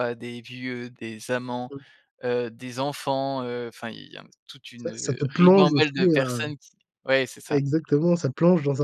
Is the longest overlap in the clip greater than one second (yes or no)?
yes